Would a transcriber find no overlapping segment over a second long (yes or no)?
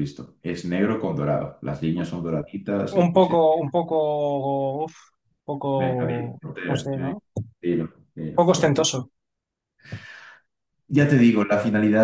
no